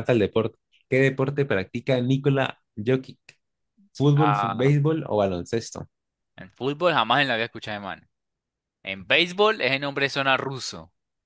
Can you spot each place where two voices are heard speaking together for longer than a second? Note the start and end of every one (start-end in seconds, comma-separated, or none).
none